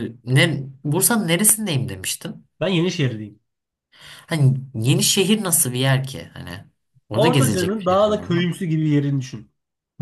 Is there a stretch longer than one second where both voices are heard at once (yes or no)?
yes